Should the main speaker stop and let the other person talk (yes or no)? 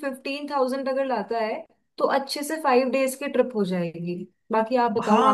yes